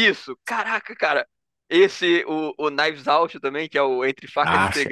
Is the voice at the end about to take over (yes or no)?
yes